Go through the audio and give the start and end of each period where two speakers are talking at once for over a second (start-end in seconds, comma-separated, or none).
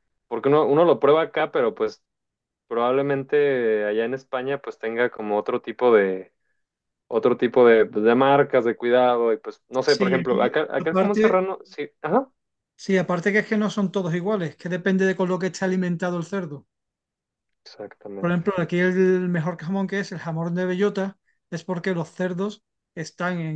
9.8-11.4